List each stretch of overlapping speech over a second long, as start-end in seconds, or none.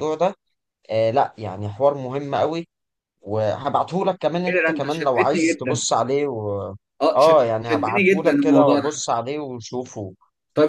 4.5-5.8, 7.2-8.9